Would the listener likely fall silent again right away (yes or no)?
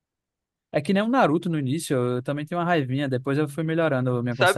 no